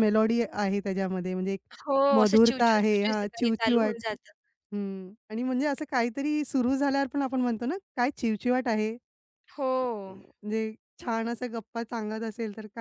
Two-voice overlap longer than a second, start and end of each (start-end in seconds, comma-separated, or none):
2.1-4.0